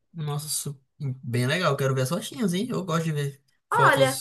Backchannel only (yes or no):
no